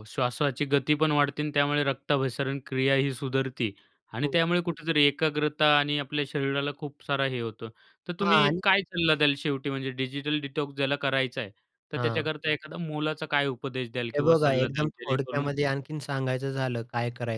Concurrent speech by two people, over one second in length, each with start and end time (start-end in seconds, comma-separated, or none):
14.1-15.5